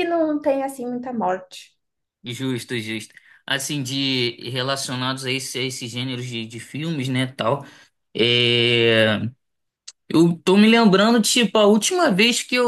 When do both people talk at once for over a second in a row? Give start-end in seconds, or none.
none